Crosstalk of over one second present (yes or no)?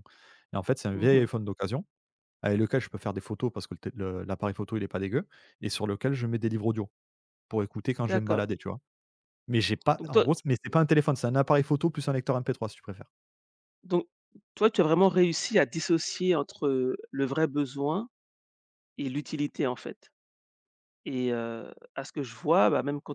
no